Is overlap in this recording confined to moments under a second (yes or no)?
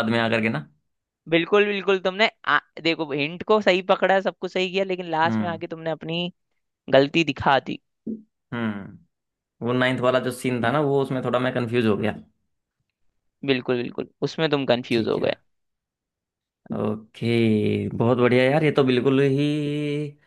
yes